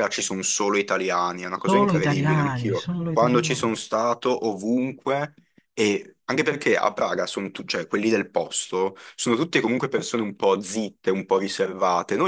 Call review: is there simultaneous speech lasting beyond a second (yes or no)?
yes